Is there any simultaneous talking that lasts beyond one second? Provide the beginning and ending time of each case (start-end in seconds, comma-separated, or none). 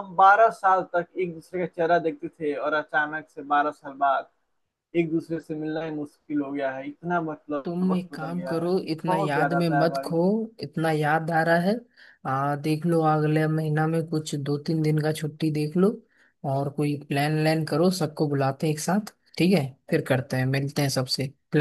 7.6-10.2